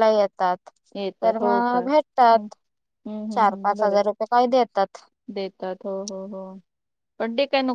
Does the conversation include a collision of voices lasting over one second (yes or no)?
yes